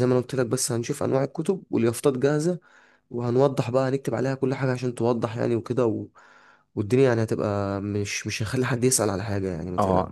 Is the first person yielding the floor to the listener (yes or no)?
yes